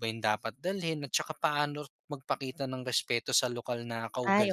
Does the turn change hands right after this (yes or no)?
yes